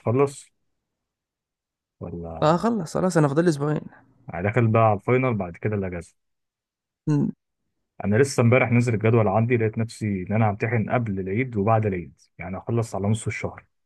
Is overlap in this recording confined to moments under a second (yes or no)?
yes